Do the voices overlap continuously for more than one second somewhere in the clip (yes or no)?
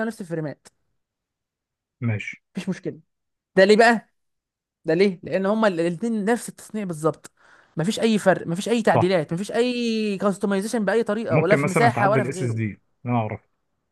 yes